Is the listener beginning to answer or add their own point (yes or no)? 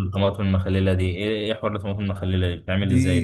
yes